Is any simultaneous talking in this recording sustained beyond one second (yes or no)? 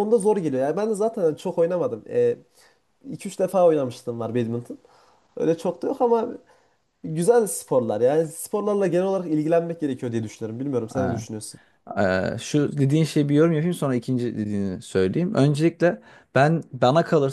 no